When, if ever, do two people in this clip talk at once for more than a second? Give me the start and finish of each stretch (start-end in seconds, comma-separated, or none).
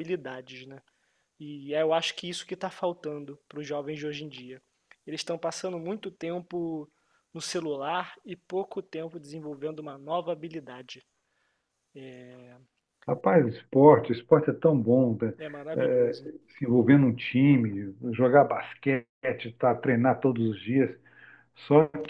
none